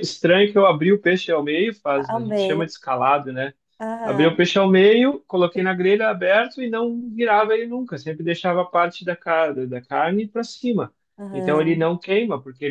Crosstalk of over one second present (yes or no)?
no